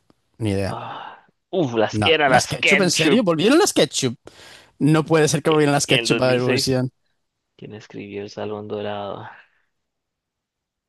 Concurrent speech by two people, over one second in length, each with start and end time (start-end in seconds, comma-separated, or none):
1.9-3.2, 5.5-6.8